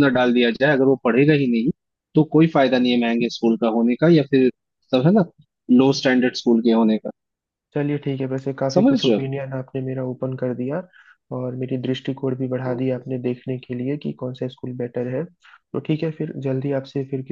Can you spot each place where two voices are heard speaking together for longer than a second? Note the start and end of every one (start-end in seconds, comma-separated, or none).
none